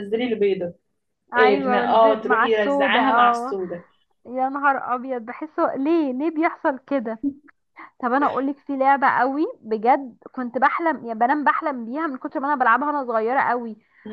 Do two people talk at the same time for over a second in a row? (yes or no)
yes